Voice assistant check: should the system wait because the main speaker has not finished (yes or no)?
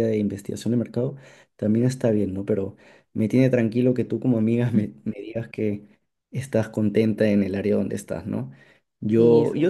yes